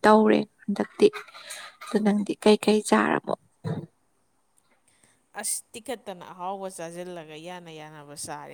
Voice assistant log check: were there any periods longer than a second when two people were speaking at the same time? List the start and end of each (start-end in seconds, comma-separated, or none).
none